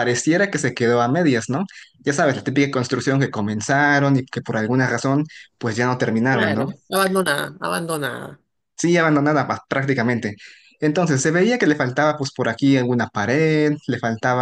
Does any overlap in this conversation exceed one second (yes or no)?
no